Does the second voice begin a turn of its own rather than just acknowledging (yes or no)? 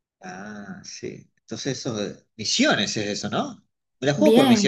yes